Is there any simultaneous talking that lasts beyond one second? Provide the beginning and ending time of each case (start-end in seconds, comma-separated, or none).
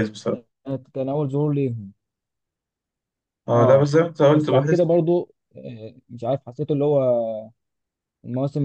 3.5-4.9